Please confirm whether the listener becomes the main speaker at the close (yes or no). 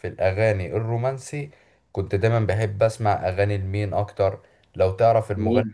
no